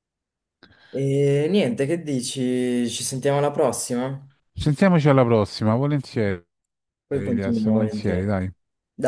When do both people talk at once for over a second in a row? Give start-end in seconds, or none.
7.1-8.3